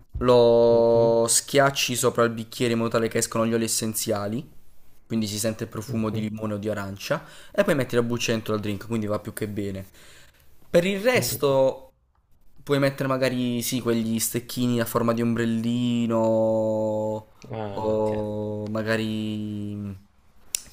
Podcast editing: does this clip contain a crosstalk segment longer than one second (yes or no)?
no